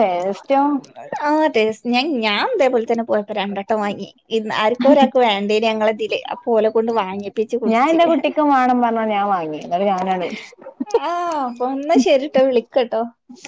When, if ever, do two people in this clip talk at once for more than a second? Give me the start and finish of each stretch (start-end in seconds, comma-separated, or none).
none